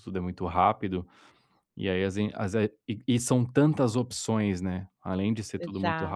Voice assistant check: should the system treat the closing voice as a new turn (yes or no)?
no